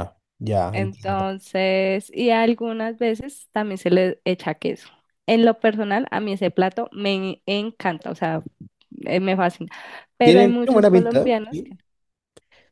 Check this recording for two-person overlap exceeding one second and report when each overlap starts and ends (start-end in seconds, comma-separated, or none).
10.2-11.8